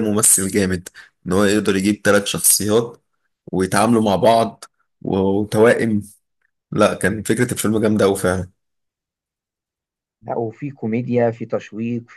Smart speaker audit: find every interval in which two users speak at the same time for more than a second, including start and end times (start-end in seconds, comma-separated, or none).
none